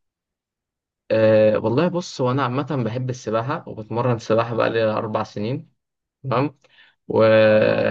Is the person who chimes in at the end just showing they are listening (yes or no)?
yes